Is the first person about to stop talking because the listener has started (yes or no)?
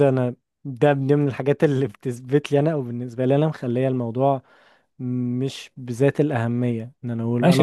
yes